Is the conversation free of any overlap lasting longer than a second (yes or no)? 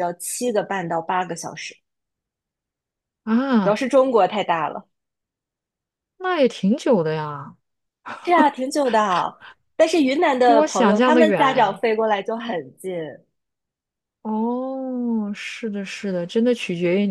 no